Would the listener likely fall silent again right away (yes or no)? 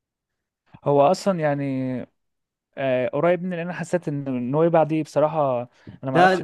yes